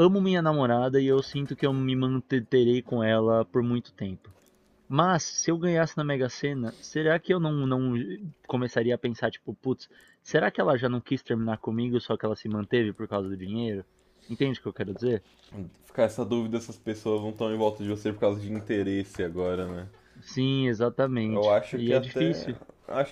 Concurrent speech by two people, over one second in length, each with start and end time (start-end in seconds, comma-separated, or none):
21.3-22.5